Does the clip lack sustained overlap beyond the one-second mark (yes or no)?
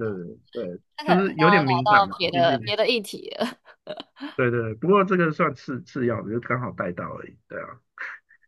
no